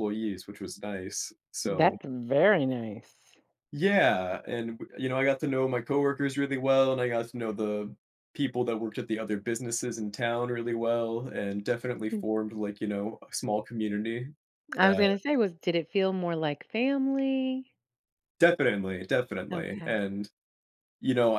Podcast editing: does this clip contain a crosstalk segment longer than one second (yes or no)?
no